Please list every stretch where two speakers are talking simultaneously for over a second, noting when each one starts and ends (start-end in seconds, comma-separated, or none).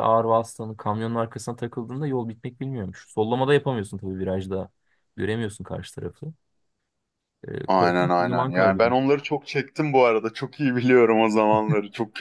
7.7-9.0